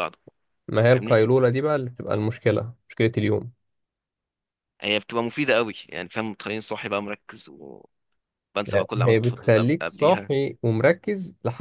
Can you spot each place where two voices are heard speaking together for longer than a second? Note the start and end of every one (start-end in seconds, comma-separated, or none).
8.8-10.3